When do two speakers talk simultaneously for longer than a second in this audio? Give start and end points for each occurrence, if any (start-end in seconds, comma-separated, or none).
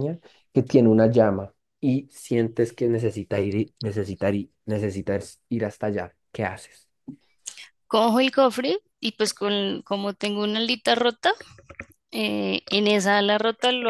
none